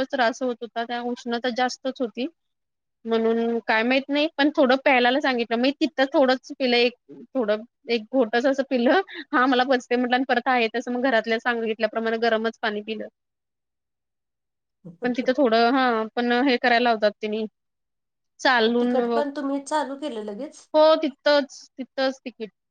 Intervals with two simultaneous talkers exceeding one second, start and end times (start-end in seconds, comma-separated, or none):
none